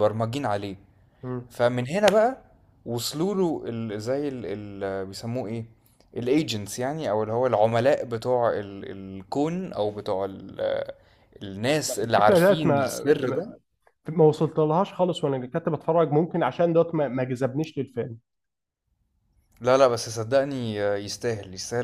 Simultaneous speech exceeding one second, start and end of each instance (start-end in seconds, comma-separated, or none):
12.0-13.4